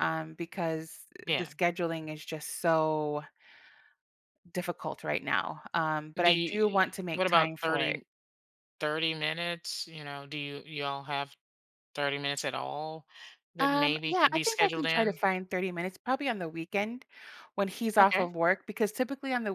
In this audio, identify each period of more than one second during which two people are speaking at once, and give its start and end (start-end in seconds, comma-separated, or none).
6.2-8.0, 13.6-15.2